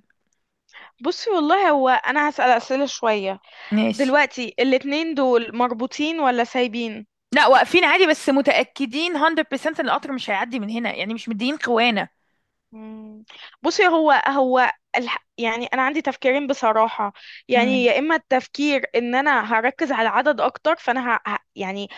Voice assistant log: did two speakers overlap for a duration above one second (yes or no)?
no